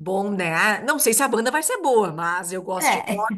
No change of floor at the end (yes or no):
yes